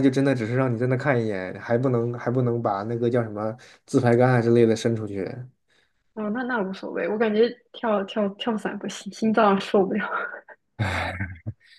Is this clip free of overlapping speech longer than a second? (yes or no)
yes